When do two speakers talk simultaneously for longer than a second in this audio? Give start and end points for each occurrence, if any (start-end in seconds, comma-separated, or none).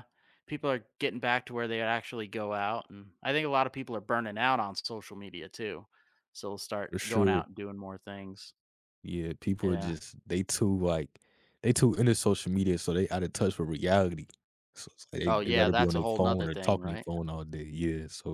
15.3-17.1